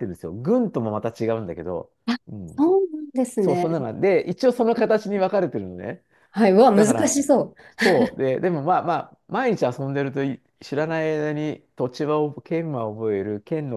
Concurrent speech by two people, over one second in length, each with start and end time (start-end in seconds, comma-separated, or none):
none